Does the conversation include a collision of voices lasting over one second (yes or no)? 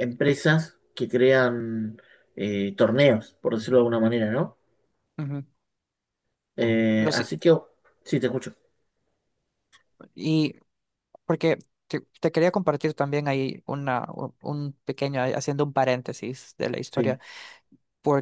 no